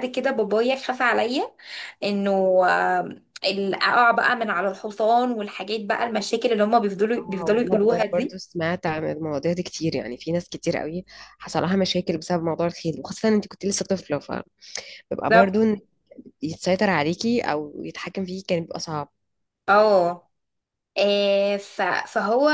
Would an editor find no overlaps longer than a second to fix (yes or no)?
no